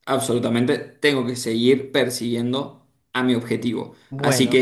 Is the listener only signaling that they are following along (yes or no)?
yes